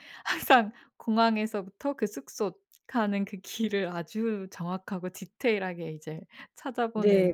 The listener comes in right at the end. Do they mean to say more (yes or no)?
yes